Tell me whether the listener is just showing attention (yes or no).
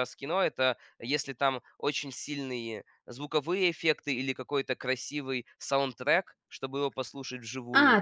no